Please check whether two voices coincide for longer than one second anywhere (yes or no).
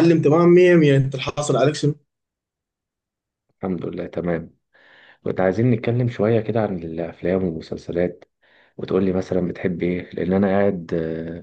no